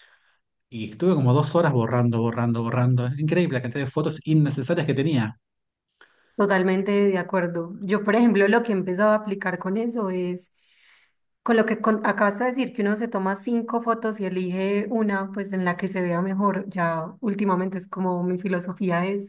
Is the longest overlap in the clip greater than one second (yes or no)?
no